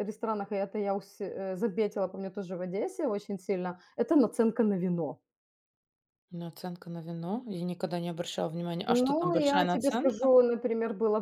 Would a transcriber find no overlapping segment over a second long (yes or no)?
no